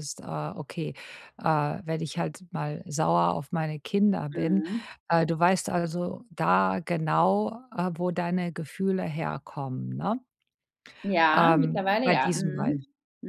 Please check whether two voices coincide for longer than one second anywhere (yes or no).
yes